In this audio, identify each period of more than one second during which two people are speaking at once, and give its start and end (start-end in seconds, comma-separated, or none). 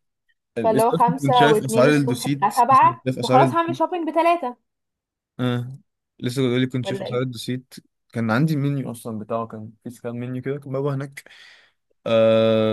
0.6-3.8